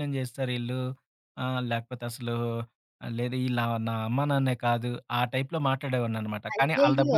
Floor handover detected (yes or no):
yes